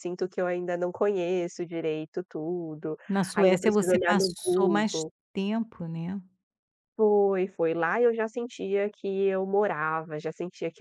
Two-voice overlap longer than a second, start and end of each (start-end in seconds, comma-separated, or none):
3.3-5.1